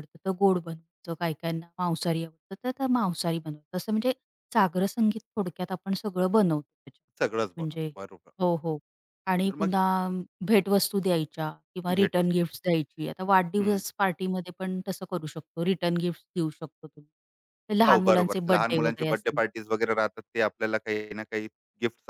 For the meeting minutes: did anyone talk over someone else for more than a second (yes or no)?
yes